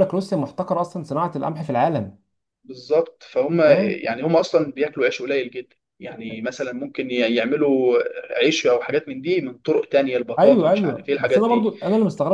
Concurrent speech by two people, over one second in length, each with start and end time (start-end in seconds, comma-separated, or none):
10.4-11.7